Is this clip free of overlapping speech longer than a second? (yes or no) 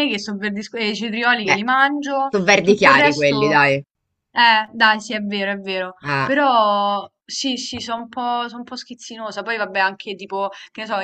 no